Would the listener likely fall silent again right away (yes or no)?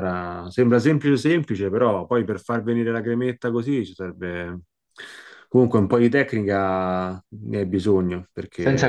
no